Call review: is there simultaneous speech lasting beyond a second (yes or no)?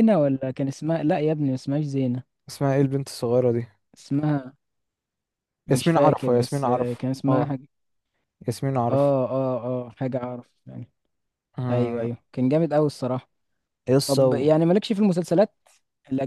yes